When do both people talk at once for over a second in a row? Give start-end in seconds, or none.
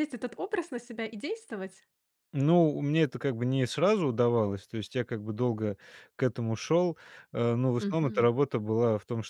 none